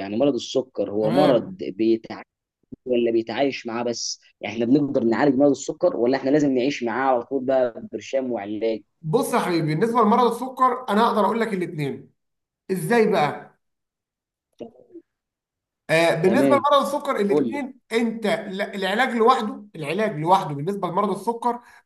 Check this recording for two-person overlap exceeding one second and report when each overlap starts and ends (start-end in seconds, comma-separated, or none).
none